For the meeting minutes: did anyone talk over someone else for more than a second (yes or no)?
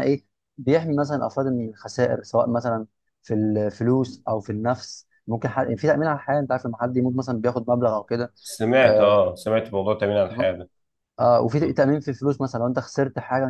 no